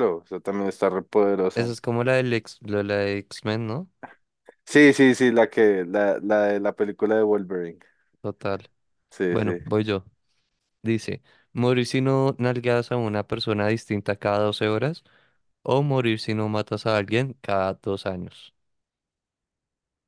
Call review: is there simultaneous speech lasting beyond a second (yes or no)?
no